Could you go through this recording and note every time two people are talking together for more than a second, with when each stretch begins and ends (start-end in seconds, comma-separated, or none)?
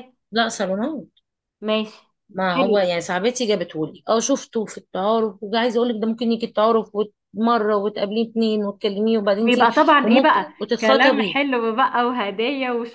9.4-11.4